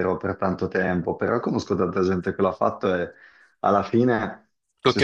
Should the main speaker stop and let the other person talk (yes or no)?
no